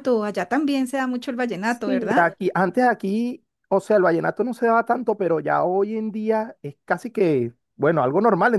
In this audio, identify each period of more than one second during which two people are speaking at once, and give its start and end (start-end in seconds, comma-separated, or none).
none